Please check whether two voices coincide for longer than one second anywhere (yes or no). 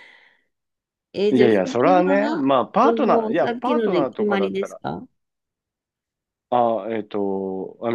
yes